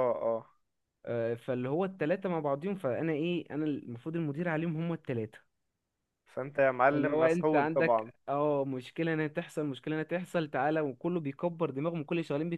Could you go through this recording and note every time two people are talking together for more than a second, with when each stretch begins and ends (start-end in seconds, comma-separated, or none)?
6.8-8.1